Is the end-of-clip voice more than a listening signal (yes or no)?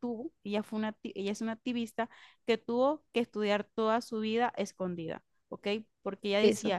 no